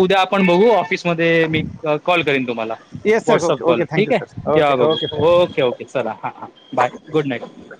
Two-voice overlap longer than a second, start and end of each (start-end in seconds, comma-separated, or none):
3.3-5.3